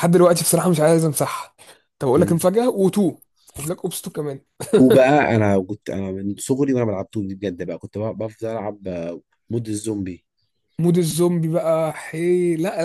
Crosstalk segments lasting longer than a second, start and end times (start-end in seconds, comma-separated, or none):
none